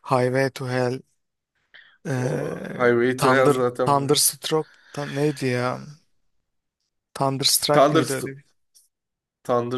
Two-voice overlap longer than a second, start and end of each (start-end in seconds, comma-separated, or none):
2.2-4.1